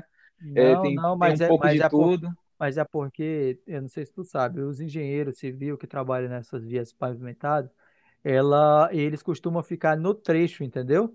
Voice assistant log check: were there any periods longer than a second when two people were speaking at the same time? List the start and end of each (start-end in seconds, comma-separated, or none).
0.5-2.1